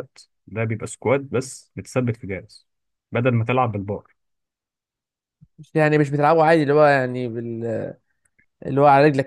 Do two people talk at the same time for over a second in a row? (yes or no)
no